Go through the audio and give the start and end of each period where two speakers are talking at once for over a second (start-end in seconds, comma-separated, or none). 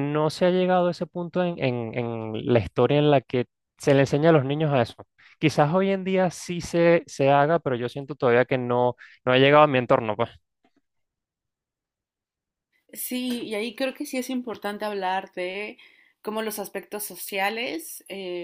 none